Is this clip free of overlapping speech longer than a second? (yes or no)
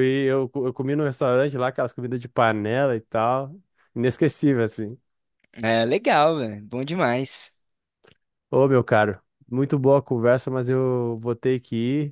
yes